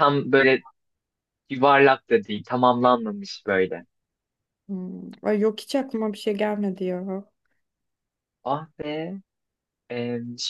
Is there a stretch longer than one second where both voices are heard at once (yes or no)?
no